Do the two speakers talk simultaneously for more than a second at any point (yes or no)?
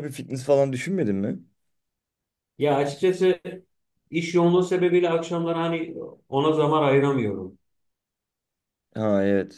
no